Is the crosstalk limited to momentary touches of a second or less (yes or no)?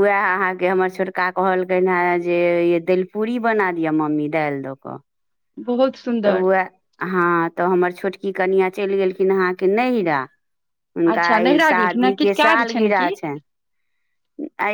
no